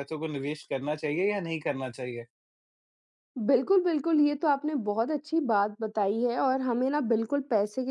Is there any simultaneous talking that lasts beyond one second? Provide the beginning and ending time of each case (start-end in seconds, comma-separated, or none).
none